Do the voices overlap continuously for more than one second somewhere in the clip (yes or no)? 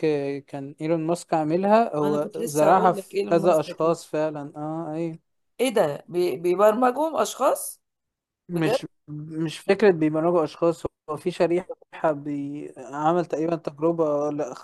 yes